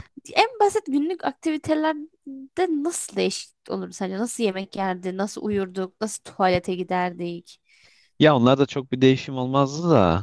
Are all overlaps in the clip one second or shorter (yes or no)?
yes